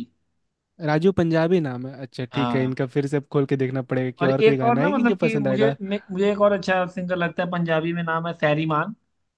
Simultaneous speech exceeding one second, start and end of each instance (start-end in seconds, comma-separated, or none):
4.2-5.7